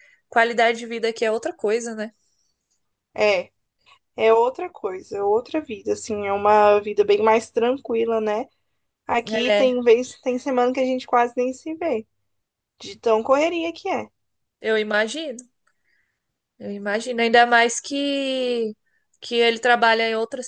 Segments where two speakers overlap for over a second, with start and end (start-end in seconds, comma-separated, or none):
none